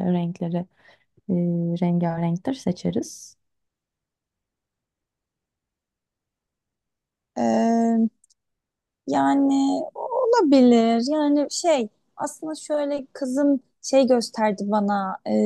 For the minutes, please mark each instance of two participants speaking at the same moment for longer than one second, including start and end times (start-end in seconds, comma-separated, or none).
none